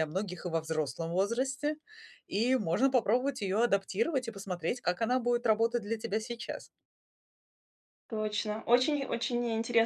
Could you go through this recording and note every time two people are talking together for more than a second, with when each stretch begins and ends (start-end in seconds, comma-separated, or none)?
none